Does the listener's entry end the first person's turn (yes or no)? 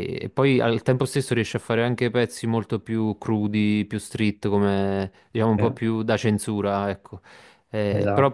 no